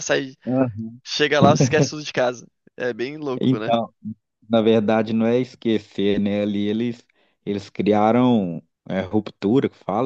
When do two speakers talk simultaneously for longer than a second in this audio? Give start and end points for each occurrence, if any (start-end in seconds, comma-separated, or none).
none